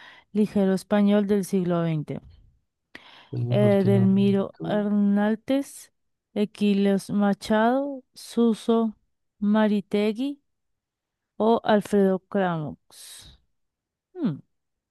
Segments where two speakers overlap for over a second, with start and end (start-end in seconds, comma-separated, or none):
3.5-4.8